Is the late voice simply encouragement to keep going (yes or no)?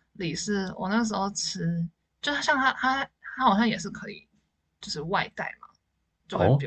yes